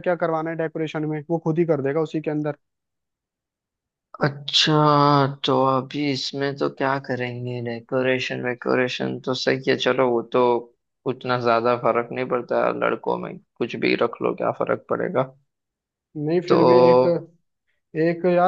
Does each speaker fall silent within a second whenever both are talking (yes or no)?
yes